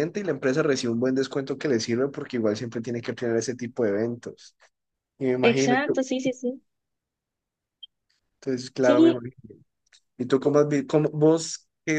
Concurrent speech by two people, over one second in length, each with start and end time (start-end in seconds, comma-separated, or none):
none